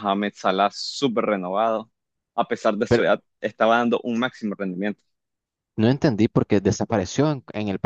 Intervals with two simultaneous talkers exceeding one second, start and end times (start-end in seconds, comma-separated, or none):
none